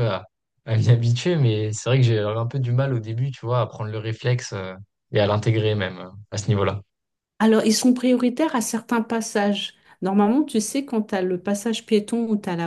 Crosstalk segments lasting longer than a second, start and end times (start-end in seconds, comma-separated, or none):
none